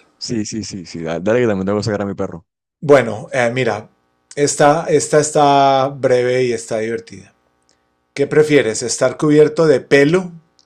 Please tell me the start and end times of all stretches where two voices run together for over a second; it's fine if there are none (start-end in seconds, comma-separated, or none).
none